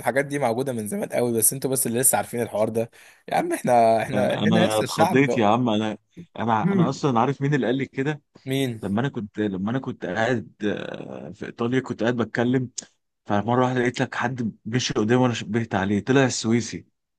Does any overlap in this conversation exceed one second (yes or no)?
yes